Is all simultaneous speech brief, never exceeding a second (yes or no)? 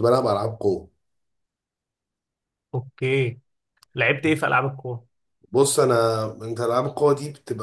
yes